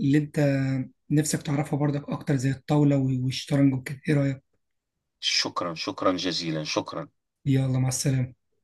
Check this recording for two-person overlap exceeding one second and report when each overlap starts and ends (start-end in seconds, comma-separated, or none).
none